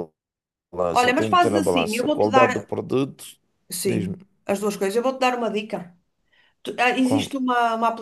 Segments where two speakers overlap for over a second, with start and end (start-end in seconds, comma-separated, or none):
0.9-2.7